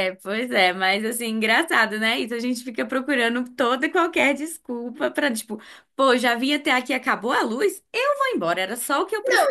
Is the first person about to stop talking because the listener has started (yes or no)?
yes